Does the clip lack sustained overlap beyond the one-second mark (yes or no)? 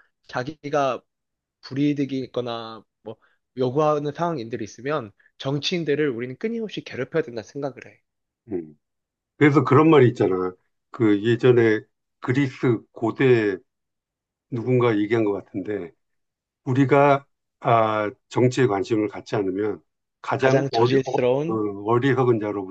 no